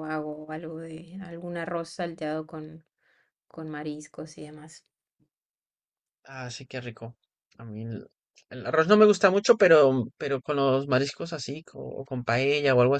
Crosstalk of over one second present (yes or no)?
no